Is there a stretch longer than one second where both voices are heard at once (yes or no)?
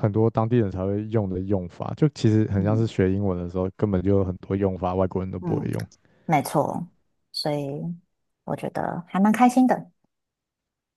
no